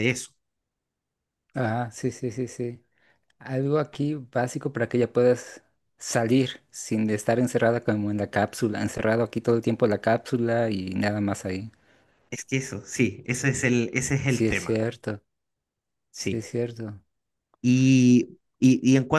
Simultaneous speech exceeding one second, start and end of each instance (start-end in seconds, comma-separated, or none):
none